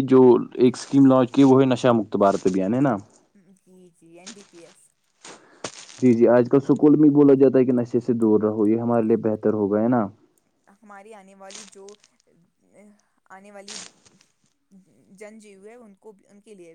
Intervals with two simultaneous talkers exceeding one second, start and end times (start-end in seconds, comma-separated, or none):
none